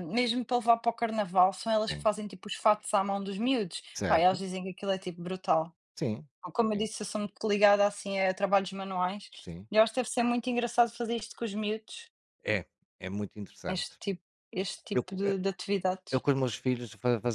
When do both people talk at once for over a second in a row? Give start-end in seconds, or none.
none